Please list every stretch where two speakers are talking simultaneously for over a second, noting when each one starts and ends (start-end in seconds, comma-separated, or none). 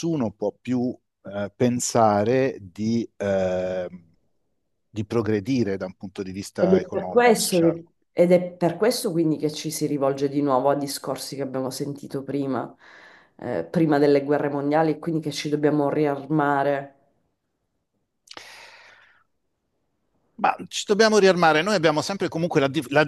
6.6-7.8